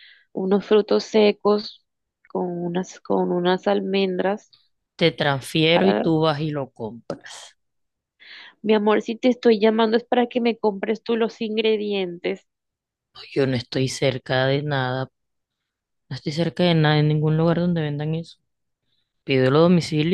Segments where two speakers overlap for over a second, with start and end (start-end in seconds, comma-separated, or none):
none